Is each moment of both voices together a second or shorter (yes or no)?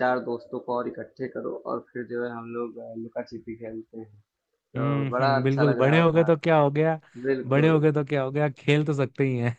no